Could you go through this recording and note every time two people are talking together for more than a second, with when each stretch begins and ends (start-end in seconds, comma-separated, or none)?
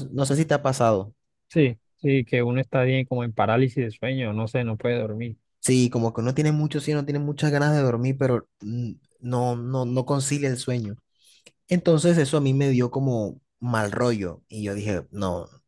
none